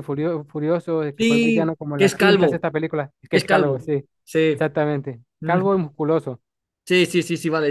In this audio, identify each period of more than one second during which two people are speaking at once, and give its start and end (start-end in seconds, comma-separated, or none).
1.2-2.7